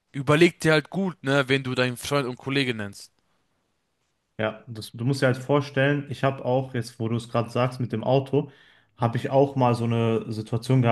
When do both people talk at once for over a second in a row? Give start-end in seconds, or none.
none